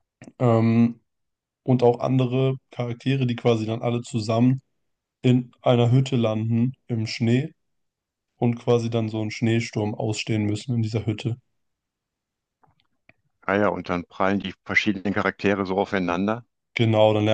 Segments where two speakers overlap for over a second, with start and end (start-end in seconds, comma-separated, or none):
none